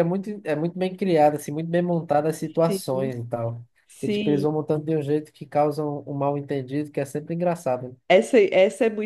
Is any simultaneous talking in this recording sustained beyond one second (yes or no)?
no